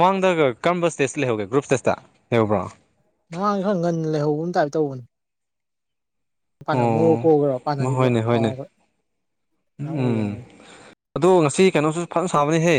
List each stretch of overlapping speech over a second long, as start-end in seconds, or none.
6.9-8.5